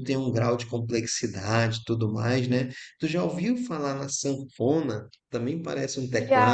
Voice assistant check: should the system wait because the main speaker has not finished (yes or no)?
yes